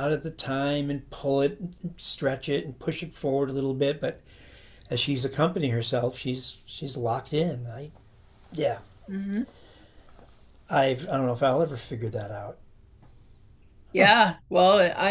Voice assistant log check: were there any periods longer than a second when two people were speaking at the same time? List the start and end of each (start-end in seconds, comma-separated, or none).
none